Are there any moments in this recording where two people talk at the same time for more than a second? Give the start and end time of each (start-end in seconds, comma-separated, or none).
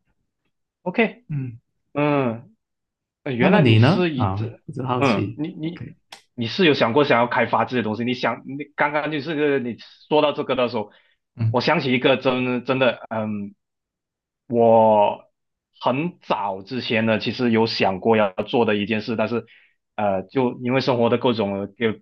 3.4-5.4